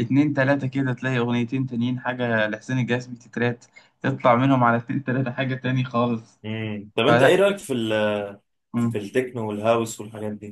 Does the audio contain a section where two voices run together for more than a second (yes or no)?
no